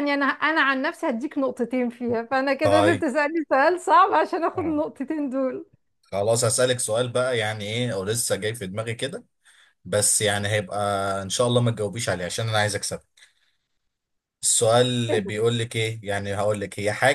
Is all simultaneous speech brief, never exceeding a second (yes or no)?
yes